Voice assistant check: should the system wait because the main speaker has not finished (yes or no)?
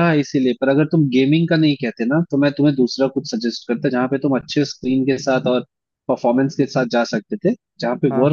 yes